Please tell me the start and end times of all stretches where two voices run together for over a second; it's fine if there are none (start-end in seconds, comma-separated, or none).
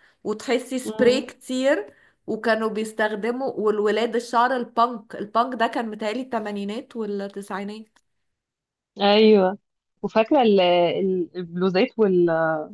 none